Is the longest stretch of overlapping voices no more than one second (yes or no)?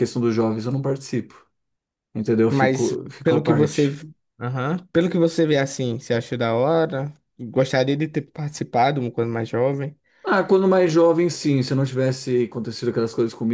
no